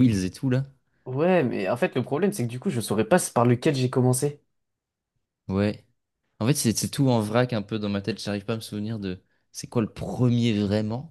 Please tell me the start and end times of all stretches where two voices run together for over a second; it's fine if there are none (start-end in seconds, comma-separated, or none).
none